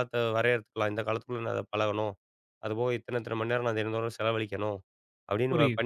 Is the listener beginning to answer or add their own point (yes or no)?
no